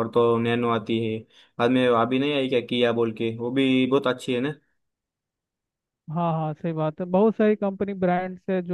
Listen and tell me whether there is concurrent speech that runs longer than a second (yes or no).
no